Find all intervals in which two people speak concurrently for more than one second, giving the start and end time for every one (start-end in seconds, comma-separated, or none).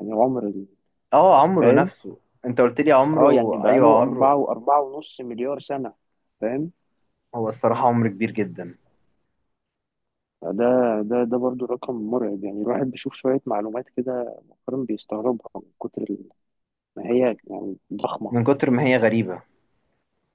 3.2-4.4